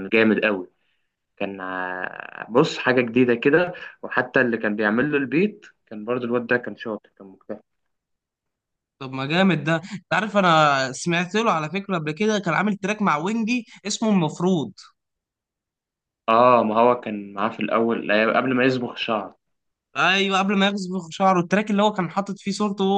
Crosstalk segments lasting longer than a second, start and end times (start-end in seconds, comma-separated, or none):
none